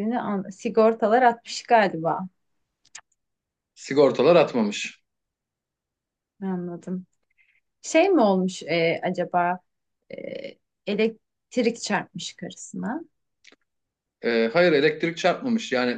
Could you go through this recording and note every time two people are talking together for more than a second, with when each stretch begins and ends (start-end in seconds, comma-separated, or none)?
none